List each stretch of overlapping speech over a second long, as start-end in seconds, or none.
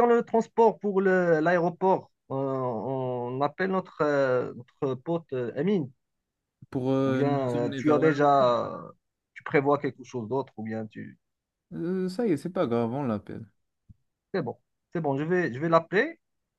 7.0-8.5